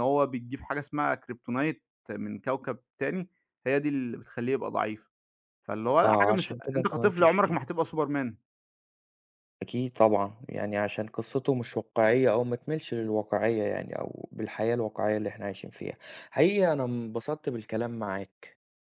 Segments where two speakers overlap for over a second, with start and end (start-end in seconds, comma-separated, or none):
6.0-7.6